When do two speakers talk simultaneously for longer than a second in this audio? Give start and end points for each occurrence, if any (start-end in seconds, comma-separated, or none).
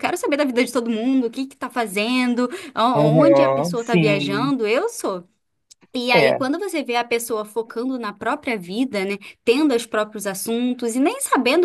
3.0-4.5